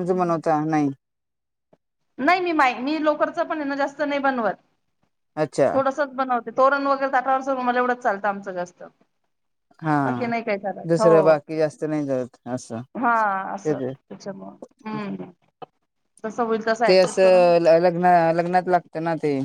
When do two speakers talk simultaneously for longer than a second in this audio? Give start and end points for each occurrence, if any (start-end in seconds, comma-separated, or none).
none